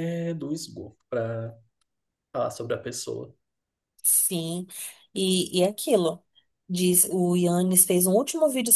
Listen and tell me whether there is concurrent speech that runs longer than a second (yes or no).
no